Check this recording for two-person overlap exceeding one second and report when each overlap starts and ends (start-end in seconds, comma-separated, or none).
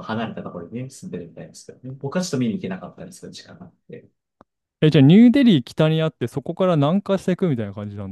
none